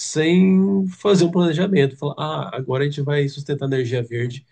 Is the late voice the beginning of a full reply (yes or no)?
no